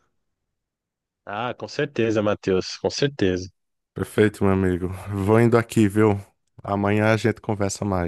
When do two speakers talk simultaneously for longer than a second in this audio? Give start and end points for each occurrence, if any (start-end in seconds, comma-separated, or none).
none